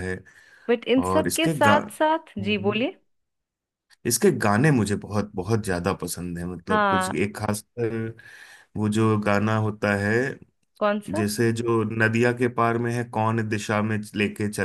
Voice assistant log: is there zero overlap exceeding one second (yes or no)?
no